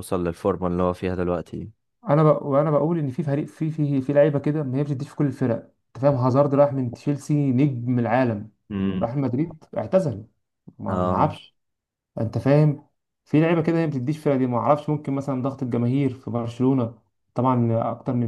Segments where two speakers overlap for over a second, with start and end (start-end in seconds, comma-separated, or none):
none